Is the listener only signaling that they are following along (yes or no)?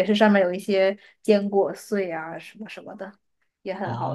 no